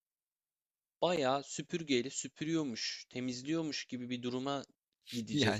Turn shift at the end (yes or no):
yes